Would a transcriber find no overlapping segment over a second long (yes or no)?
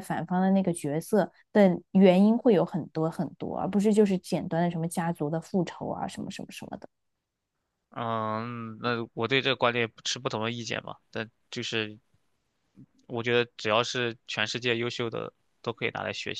yes